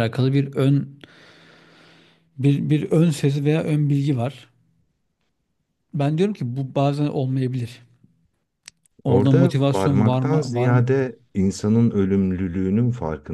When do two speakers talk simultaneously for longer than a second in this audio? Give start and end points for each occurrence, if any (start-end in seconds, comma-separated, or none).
9.0-10.8